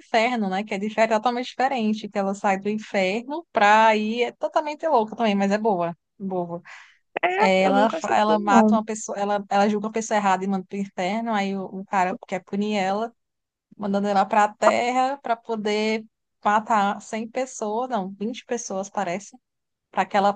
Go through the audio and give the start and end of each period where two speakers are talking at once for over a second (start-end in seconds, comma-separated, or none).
7.3-8.8